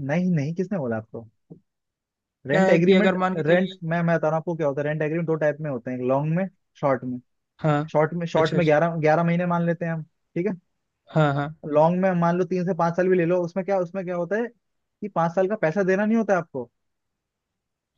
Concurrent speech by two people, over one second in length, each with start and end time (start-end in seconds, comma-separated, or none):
2.5-3.8